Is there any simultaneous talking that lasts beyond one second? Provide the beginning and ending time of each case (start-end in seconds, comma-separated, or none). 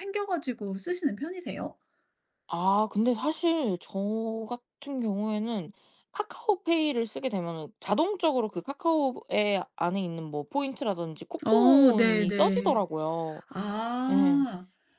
11.5-12.9